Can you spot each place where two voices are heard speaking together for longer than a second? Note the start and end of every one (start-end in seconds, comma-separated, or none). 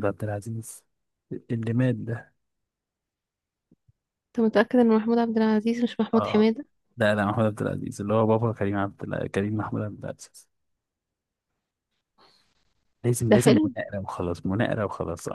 none